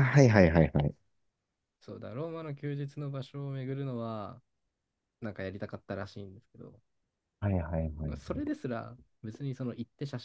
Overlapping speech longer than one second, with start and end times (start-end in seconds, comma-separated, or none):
none